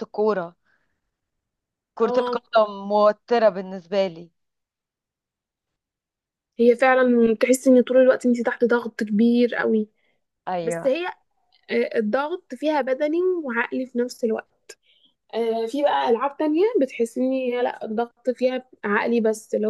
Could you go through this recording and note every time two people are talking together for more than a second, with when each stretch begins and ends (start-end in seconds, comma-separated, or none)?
none